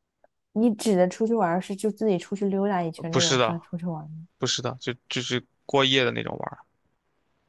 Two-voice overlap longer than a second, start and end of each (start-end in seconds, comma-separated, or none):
none